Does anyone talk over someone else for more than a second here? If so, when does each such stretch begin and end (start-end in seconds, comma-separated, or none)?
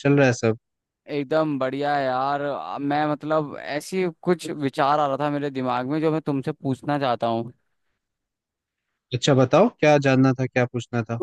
none